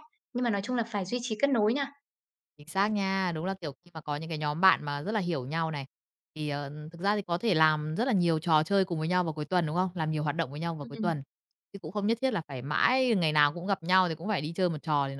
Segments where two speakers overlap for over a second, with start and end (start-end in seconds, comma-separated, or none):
none